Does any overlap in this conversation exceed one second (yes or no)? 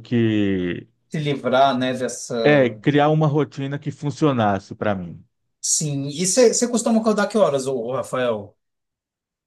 no